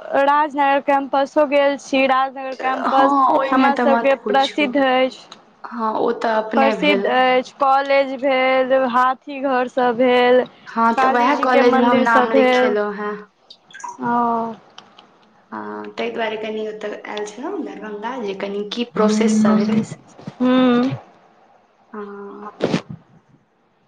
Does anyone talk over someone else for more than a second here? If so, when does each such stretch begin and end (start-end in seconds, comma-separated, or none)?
3.0-4.7, 11.0-12.8